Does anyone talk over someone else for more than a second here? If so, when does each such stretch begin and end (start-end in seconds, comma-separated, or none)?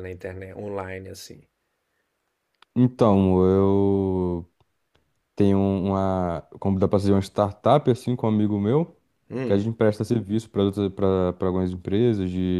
none